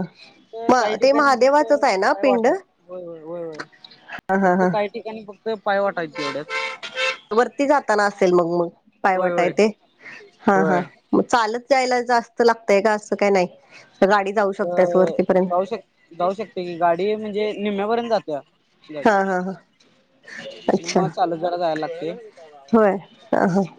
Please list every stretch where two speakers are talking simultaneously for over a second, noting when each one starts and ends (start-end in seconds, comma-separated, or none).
0.7-2.8